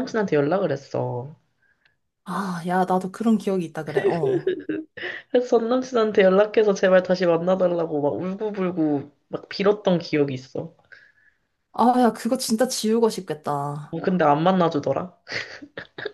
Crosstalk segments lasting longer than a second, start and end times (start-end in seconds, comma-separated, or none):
none